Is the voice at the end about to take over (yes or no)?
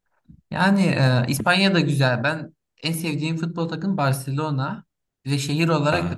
no